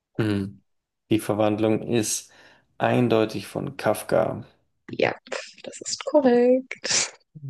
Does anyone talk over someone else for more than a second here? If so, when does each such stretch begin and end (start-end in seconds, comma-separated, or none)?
none